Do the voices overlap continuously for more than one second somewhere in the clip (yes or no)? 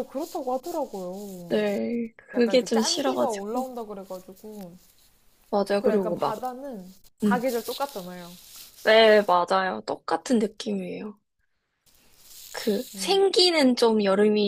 yes